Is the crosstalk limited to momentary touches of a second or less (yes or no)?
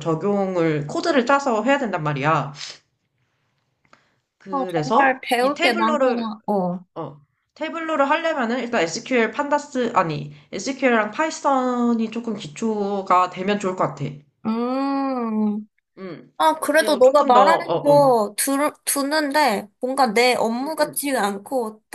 no